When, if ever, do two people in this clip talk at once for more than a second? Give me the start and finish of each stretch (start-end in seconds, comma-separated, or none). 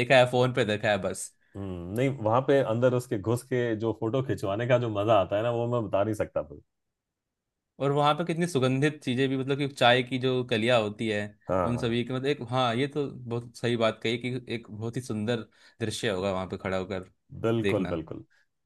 none